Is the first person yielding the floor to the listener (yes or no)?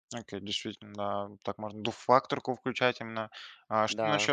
no